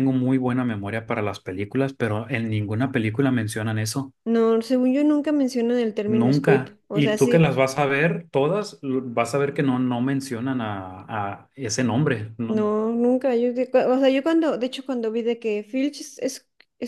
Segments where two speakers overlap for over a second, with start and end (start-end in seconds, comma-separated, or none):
6.1-7.5